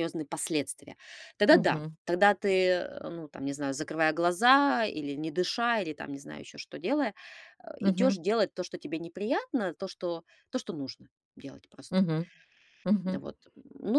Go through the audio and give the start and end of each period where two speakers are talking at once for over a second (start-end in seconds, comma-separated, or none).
none